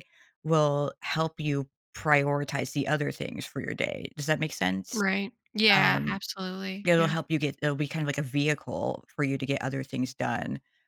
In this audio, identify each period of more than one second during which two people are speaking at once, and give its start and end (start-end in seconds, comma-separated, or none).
none